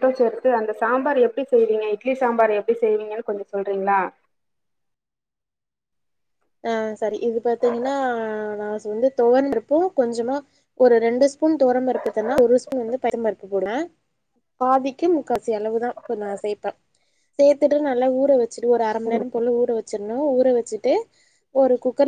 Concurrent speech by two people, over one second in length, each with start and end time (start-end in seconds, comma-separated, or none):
none